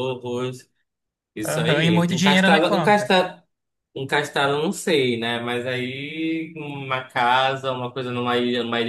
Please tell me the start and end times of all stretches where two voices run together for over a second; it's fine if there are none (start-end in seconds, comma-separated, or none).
1.4-3.1